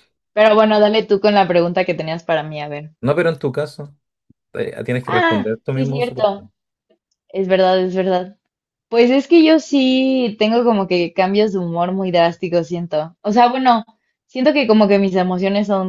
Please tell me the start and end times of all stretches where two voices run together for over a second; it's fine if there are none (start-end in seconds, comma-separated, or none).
5.0-6.4